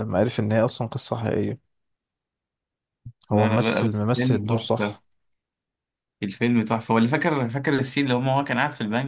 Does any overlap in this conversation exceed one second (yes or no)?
yes